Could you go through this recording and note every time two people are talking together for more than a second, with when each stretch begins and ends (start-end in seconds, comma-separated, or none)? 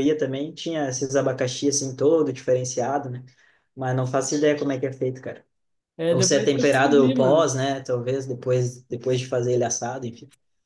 6.1-7.5